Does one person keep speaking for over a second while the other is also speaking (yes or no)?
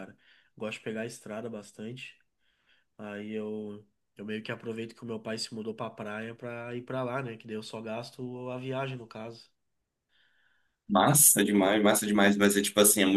no